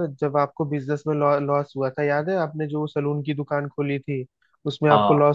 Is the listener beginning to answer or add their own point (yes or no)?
no